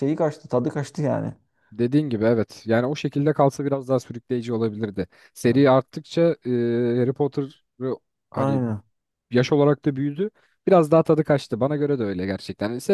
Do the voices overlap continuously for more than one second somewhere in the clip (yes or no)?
no